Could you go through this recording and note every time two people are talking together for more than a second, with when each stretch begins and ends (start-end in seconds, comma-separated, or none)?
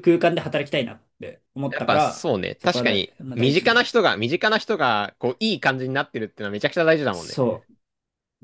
1.7-4.0